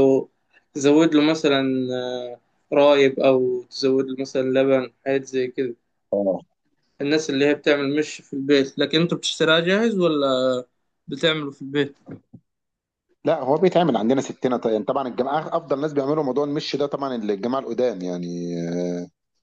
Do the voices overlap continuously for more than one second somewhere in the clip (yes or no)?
no